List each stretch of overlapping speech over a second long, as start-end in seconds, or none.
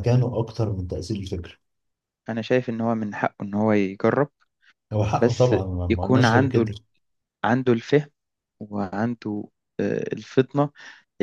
5.2-6.7